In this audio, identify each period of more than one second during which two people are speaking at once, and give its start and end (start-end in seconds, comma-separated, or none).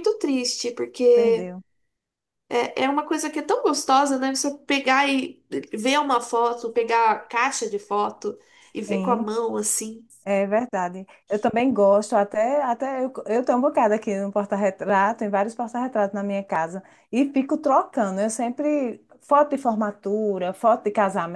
none